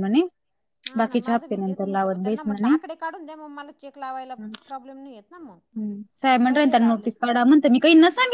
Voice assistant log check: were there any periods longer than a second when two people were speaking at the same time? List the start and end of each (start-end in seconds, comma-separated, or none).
1.0-2.9